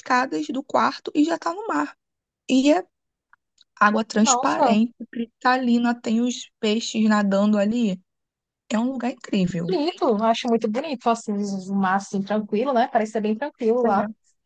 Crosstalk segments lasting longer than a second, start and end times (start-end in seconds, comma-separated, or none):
none